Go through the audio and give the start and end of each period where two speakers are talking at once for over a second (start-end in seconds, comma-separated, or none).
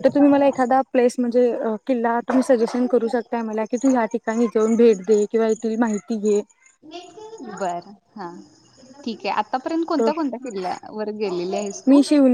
none